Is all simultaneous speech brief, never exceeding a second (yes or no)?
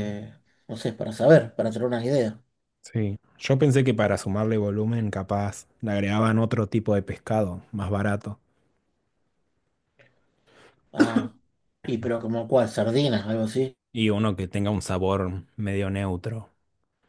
yes